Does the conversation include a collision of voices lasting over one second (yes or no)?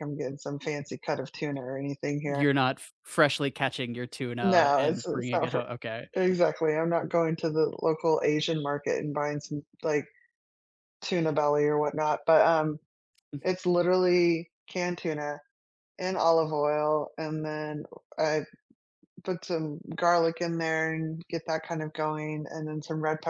yes